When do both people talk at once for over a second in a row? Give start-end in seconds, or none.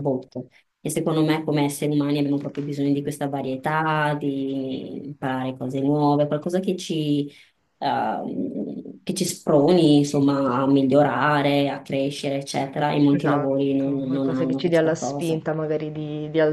13.1-15.4